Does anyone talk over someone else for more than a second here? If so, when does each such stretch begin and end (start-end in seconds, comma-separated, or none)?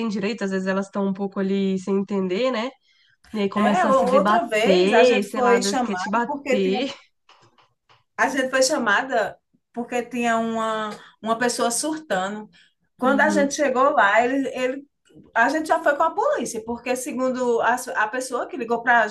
3.5-6.8